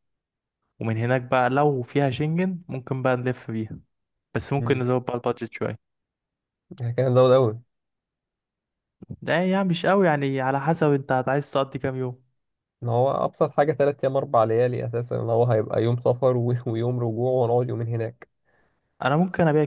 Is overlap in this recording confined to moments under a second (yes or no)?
yes